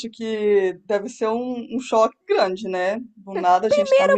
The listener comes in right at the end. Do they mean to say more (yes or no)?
yes